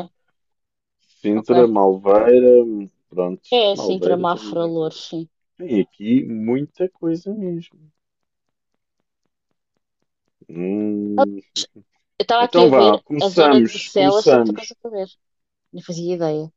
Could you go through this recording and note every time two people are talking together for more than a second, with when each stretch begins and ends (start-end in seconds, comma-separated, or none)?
3.5-4.9, 12.4-14.8